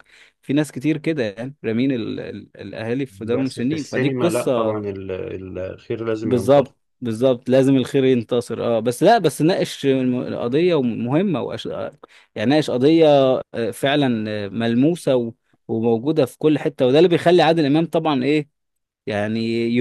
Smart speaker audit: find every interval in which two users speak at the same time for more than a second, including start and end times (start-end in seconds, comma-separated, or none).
3.3-4.8